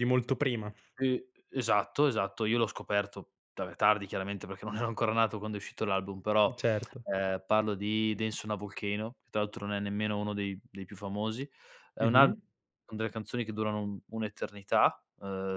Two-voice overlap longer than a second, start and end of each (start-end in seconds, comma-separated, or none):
none